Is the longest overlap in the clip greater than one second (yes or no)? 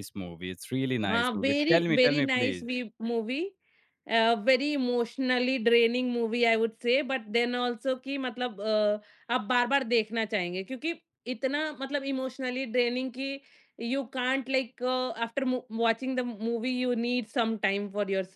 yes